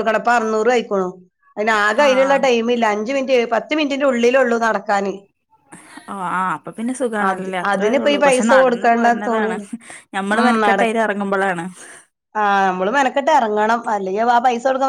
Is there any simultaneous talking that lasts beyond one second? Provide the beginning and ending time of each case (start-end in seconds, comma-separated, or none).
7.7-9.6